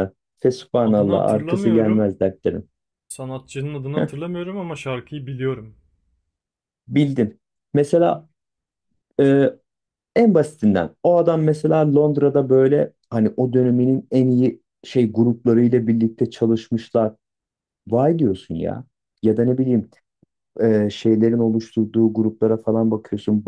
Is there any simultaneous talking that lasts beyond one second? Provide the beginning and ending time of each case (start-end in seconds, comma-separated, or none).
0.8-2.1